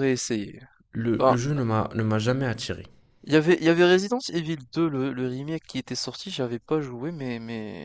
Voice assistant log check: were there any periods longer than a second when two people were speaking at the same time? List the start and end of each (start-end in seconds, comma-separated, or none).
none